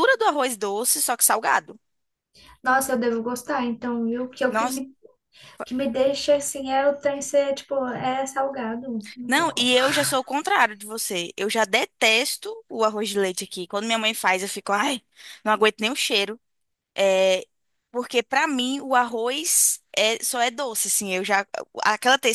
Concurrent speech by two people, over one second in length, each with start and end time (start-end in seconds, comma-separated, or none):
none